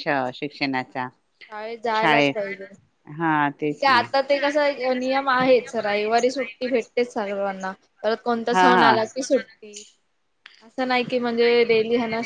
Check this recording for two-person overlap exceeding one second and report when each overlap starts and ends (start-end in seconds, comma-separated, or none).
none